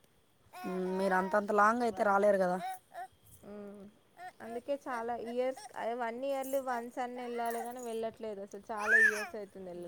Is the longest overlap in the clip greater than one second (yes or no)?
no